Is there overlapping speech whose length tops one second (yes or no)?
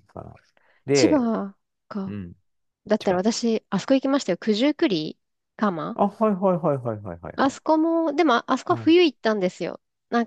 no